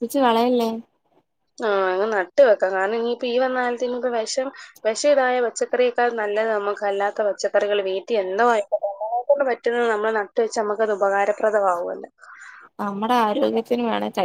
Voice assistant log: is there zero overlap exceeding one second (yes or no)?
yes